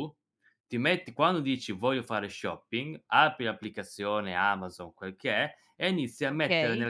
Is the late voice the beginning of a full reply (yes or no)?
no